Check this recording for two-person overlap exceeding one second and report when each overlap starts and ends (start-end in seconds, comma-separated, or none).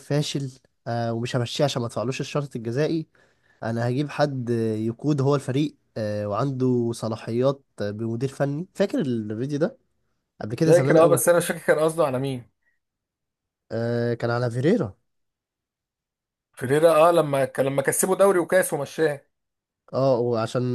none